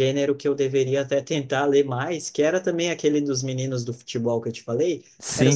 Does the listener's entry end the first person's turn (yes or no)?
no